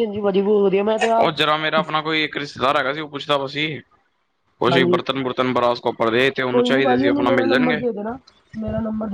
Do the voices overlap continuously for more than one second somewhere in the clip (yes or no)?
yes